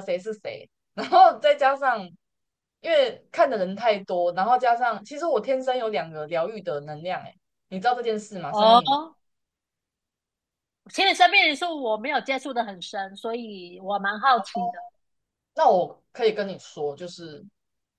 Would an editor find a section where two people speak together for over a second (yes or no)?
no